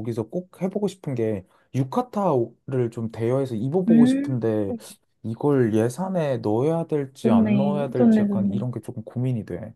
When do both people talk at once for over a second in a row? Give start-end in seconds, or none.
7.2-8.6